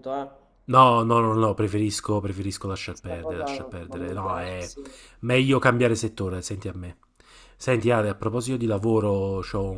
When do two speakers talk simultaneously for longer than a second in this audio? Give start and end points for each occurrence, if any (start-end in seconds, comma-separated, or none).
2.9-4.7